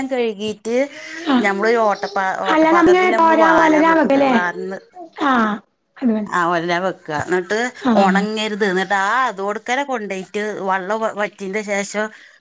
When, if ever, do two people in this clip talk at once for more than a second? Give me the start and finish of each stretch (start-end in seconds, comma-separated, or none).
2.5-4.3